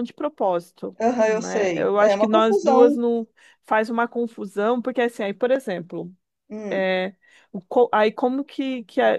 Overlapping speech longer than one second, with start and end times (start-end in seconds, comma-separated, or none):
1.0-3.0